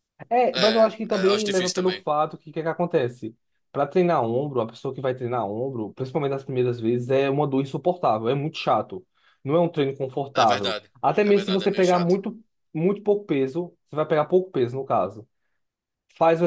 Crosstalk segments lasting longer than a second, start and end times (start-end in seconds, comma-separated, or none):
0.5-2.0, 10.3-12.2